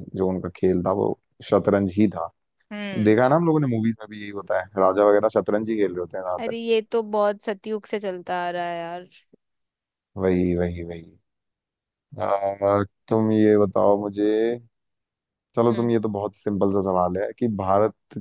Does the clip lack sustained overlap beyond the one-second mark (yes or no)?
yes